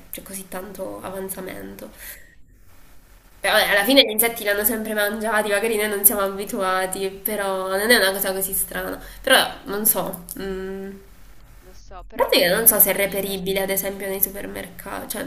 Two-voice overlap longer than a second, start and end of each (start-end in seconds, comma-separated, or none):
12.1-13.9